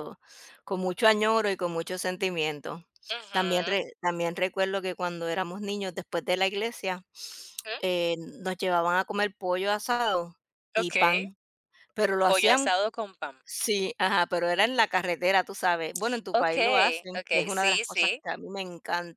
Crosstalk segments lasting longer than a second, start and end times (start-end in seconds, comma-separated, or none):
16.4-18.2